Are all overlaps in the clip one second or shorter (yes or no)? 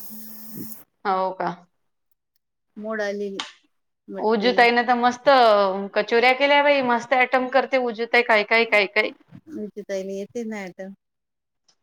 yes